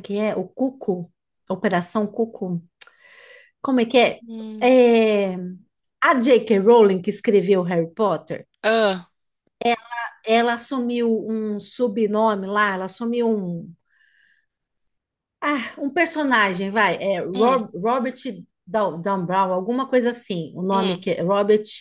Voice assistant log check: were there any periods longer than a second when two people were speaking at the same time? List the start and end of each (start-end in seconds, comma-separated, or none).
none